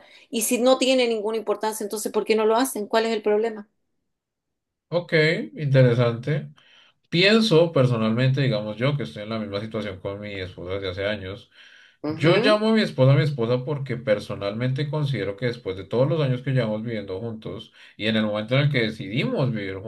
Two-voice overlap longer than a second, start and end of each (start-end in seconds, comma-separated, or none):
none